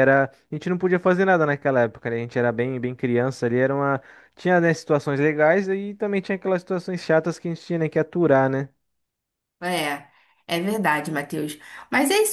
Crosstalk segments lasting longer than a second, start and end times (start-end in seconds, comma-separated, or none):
none